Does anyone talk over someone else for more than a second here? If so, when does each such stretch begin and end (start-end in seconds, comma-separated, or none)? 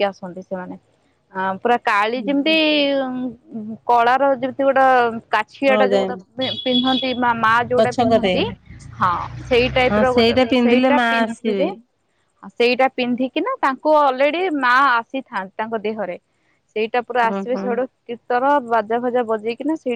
9.9-11.7